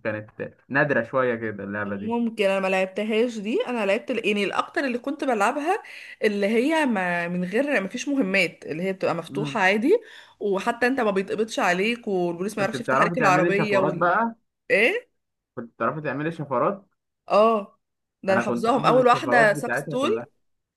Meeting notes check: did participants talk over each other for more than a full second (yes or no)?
yes